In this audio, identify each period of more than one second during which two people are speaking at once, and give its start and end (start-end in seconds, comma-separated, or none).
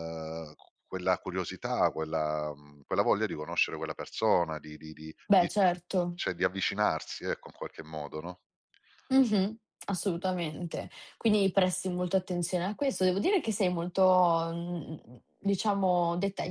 none